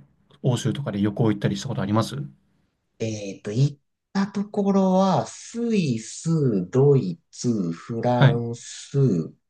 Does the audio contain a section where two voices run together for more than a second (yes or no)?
no